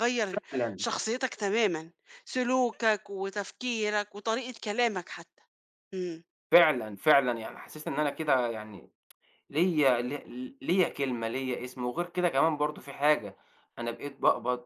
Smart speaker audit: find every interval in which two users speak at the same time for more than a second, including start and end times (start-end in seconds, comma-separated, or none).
none